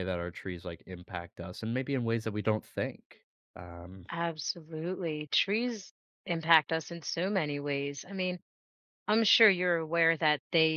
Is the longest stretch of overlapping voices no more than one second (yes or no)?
yes